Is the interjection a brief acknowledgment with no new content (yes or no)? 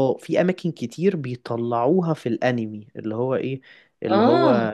yes